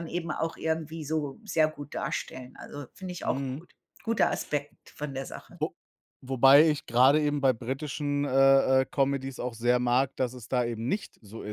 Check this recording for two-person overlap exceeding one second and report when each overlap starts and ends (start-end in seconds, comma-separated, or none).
none